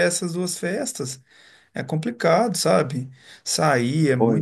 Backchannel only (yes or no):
yes